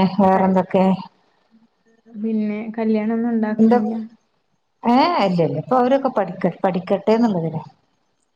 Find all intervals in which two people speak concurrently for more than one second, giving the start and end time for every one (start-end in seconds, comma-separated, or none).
none